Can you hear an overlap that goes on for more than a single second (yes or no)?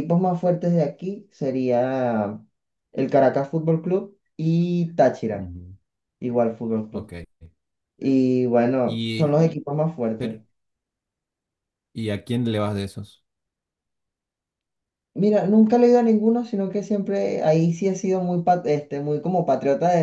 no